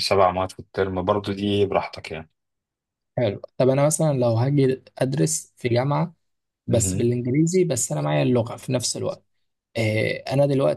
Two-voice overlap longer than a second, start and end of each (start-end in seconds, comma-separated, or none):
none